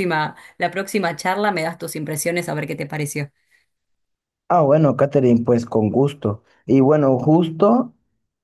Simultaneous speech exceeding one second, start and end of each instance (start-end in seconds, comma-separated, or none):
none